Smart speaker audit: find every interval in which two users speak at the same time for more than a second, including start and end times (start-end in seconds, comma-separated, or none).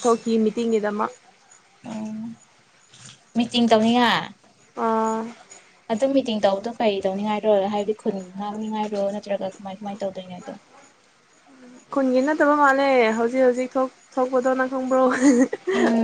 none